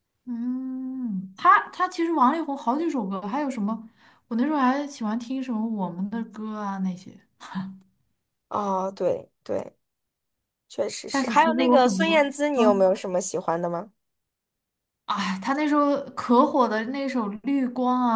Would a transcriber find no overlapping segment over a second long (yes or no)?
no